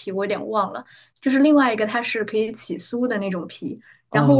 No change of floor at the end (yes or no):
yes